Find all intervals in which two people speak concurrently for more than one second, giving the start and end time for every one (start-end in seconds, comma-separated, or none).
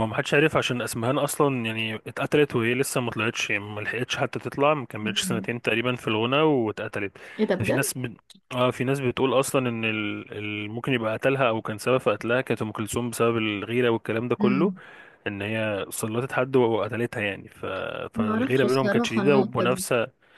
18.1-19.8